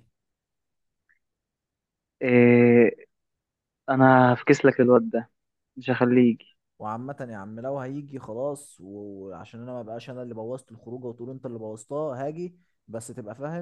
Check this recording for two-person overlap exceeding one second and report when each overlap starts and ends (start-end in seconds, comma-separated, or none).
none